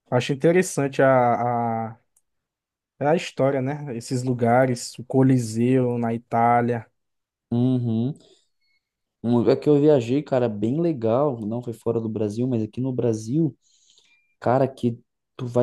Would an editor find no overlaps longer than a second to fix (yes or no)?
yes